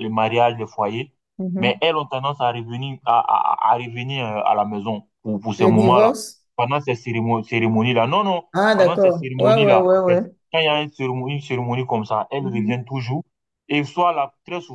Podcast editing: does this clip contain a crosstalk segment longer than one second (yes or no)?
yes